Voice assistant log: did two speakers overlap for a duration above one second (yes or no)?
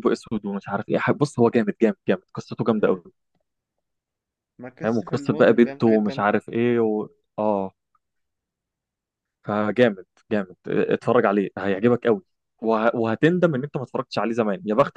yes